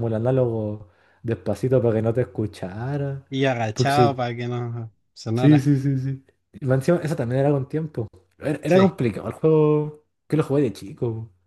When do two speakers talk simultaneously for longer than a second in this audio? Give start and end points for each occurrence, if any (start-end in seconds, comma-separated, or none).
none